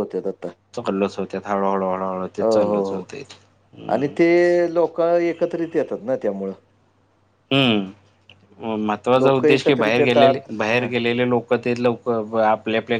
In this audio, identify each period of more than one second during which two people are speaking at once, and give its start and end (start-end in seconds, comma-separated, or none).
9.2-10.9